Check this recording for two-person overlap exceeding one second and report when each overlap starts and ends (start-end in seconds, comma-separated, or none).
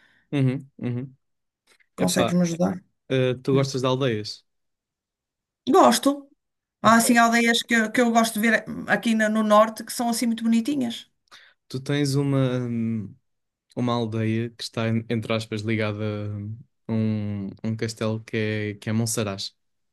none